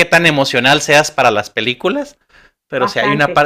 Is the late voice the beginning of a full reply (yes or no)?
no